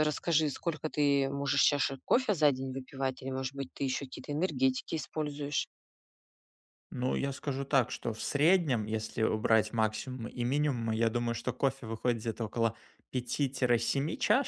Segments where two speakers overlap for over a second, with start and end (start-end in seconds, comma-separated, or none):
none